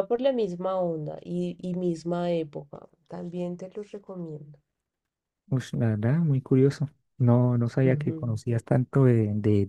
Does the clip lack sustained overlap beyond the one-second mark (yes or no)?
yes